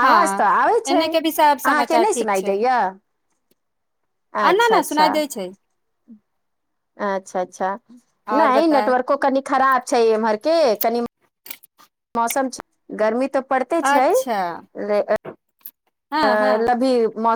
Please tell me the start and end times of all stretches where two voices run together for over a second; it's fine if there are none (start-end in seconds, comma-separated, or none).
0.9-2.5